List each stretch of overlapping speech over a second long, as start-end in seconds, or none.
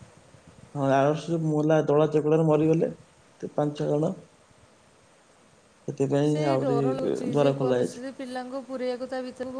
6.3-8.1